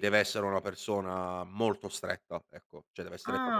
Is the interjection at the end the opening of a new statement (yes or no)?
yes